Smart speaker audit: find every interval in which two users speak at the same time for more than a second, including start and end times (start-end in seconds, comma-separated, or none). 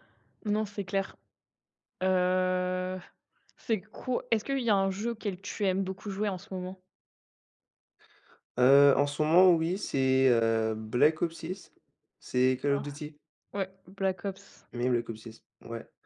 none